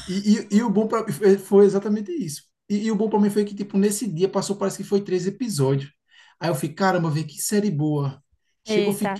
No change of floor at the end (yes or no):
no